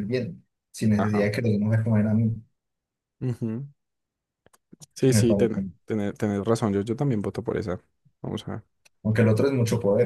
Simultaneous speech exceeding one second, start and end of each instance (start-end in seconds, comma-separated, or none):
none